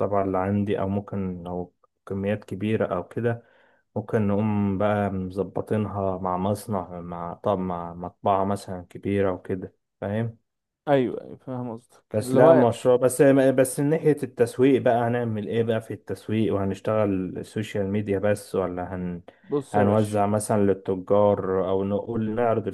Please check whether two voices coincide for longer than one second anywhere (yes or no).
no